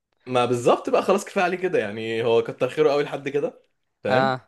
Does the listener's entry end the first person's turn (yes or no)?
no